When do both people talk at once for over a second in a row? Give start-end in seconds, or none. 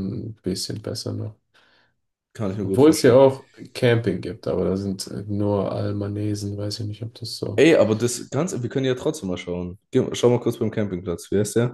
none